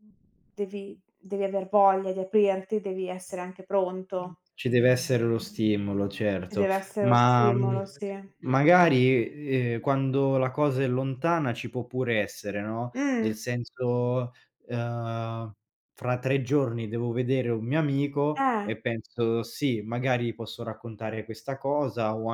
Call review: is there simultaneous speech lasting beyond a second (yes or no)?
yes